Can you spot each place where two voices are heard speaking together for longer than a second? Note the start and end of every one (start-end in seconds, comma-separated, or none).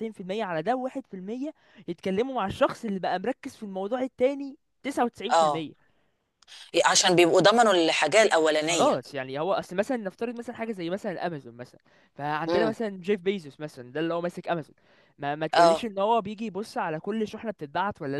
none